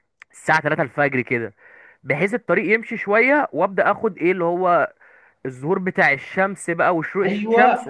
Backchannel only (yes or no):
no